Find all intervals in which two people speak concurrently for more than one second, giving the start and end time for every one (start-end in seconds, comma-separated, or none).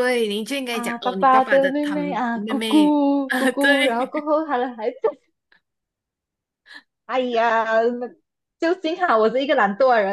0.7-4.3